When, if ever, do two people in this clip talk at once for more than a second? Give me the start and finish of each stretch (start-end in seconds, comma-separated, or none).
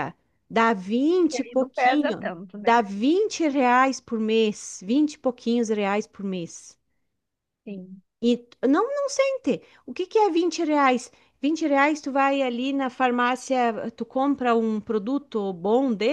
1.2-2.8